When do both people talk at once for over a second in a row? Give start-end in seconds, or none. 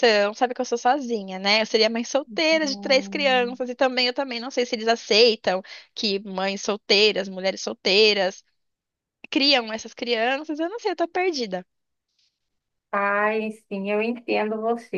2.3-3.6